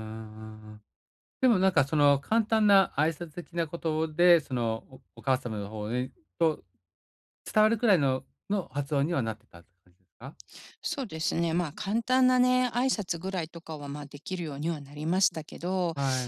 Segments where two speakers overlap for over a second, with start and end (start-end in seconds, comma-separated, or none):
none